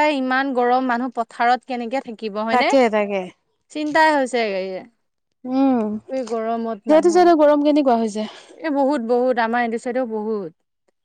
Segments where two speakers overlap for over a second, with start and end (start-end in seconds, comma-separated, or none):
none